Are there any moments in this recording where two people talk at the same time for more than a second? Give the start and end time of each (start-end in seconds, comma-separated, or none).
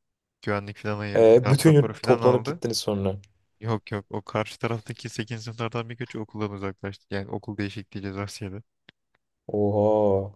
1.1-2.6